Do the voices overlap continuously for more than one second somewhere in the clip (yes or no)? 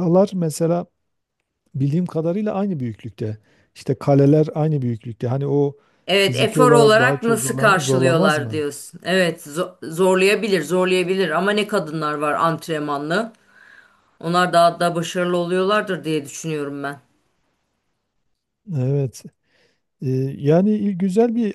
yes